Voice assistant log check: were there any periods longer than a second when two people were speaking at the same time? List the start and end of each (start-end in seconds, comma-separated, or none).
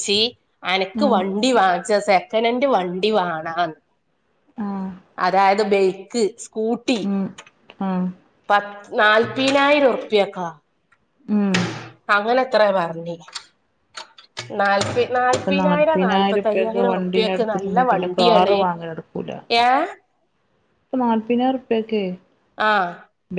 15.4-18.6